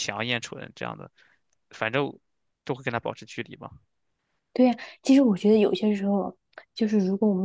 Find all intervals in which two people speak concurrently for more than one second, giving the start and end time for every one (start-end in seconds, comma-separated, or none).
none